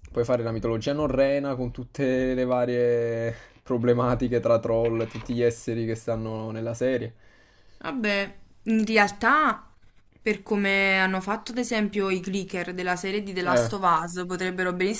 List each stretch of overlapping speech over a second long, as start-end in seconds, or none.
none